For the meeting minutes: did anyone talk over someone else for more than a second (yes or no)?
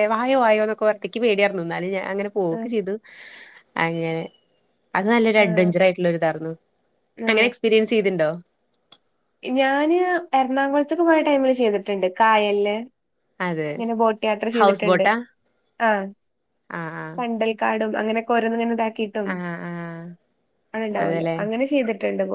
no